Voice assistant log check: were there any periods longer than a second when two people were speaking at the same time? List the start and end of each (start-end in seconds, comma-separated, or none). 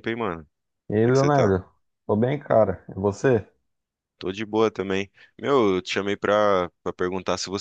none